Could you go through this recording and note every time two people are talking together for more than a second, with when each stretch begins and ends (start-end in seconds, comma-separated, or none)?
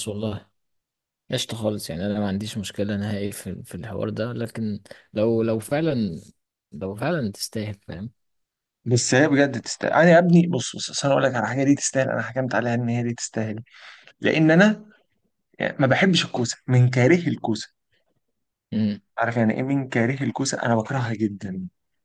none